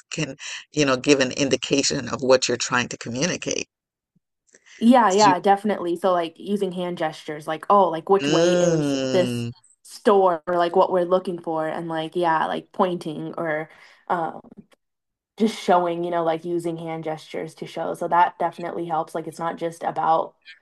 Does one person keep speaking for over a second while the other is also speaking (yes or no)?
yes